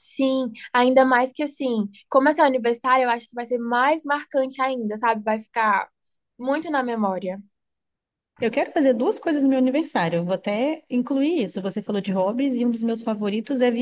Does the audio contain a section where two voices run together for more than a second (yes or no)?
no